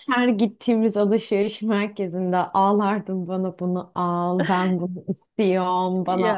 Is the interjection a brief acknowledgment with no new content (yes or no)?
yes